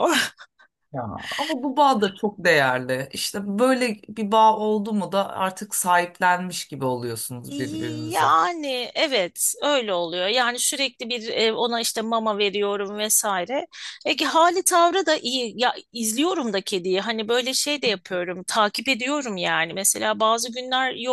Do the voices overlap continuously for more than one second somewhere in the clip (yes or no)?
no